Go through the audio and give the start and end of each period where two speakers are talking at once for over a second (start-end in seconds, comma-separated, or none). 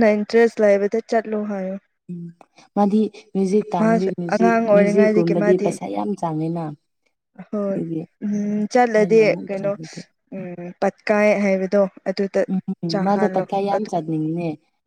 3.8-5.7